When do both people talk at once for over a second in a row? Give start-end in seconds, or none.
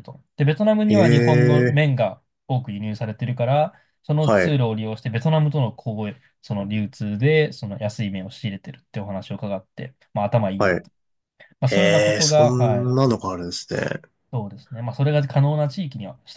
11.7-12.9